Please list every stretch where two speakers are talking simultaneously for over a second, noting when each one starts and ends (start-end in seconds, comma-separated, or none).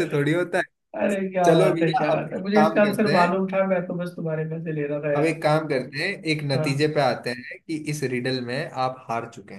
1.4-3.4